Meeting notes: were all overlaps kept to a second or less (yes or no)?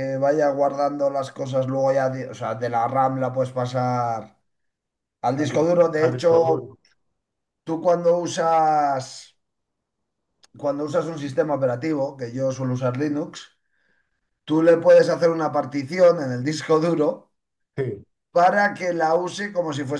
no